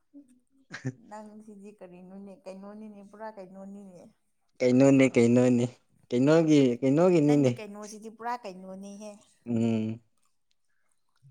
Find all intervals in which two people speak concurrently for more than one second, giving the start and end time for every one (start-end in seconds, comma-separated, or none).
none